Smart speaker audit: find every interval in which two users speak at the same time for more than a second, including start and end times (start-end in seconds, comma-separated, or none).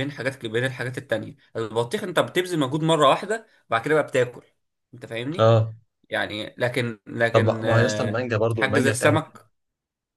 7.3-9.3